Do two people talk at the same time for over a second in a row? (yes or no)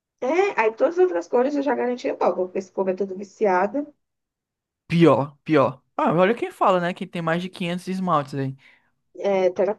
no